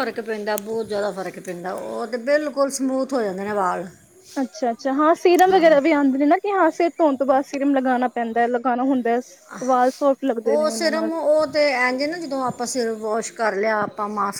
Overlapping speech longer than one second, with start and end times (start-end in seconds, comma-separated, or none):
none